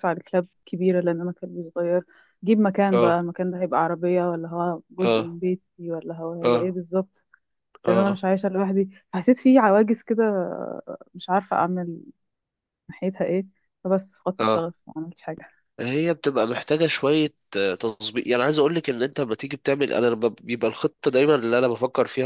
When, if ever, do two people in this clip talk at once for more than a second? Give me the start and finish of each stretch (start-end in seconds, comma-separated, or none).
none